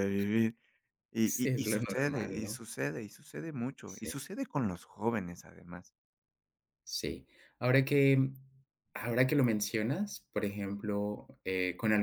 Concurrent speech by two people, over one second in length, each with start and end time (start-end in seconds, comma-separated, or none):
1.2-2.6